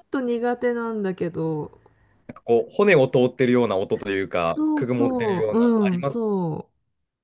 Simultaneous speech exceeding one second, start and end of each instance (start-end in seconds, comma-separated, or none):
4.5-6.2